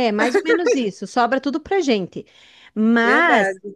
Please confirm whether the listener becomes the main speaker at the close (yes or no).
no